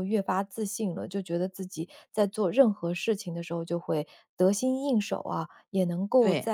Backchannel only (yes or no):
yes